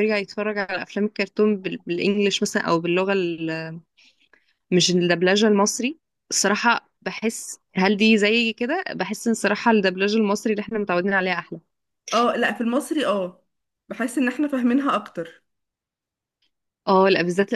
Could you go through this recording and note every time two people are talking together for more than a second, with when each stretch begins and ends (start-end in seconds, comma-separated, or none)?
none